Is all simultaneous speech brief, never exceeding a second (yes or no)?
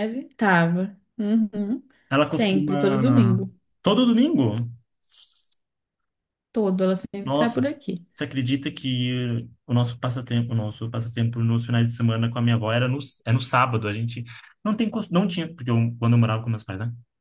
no